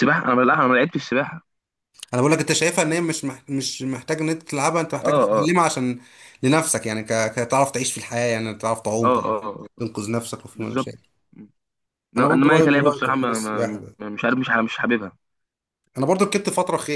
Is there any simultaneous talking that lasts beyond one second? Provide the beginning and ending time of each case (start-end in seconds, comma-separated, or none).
12.2-13.9